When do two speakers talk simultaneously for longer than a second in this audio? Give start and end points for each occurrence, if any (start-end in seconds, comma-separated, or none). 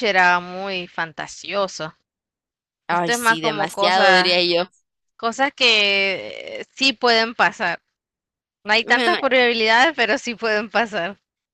2.9-4.4